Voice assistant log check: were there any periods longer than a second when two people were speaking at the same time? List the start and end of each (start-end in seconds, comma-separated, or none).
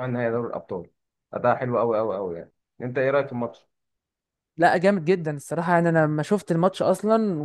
none